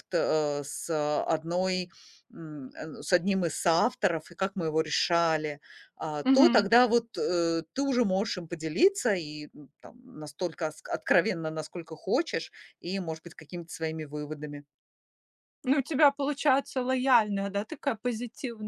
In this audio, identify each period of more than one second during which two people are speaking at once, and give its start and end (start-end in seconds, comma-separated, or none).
none